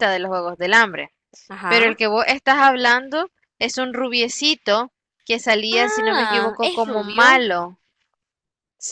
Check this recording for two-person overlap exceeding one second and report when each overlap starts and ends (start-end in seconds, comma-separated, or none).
5.7-7.5